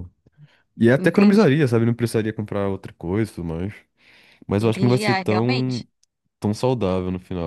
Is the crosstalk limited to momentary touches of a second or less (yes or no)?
no